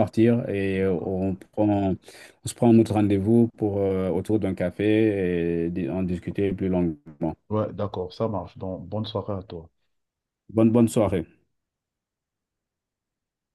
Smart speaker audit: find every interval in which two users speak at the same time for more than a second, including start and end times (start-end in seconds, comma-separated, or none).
none